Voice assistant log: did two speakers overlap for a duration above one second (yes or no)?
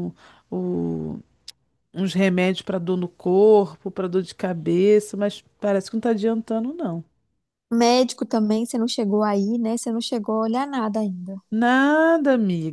no